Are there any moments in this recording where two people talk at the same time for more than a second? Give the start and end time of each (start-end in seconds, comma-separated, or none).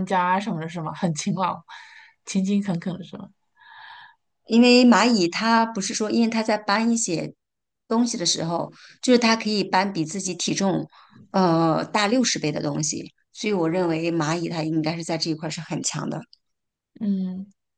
none